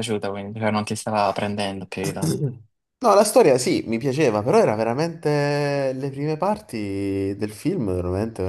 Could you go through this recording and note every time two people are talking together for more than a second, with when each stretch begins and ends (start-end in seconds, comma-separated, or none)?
none